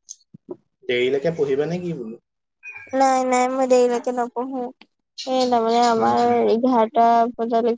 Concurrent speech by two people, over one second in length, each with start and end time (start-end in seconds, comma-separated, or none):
none